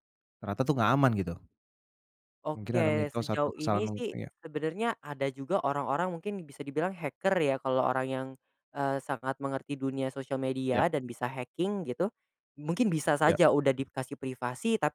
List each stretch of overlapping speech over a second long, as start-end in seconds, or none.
2.5-4.3